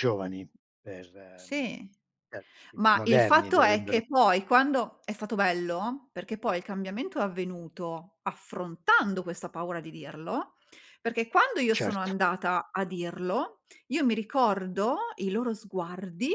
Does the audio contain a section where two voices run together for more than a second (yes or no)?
yes